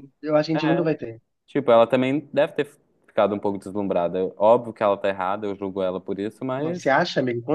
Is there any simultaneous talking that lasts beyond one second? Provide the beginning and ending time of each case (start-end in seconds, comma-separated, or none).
none